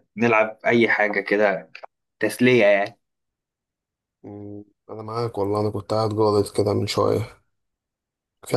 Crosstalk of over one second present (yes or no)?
no